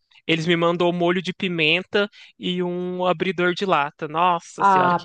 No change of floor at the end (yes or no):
no